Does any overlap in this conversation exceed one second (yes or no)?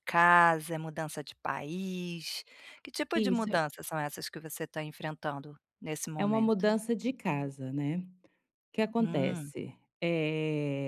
no